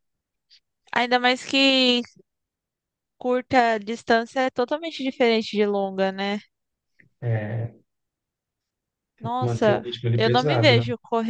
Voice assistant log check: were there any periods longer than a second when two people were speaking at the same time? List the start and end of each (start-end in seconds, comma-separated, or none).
9.2-10.7